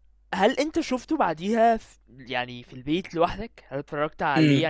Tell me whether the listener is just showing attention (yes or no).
no